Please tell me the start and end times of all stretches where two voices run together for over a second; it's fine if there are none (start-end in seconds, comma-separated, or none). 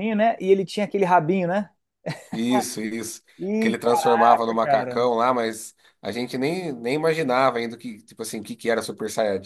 3.6-5.1